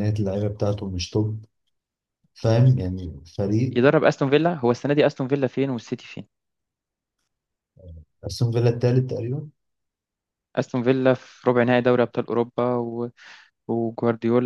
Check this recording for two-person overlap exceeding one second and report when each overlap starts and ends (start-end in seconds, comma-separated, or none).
none